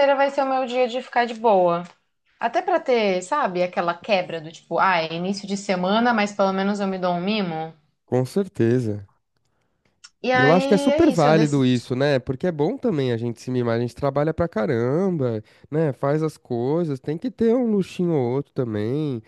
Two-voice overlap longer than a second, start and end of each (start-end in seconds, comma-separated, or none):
10.3-11.7